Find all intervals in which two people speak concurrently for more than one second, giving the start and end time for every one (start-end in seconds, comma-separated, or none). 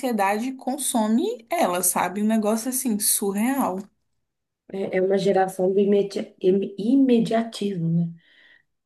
none